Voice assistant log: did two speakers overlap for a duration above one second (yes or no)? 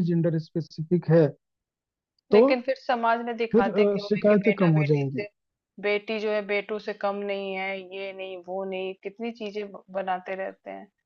yes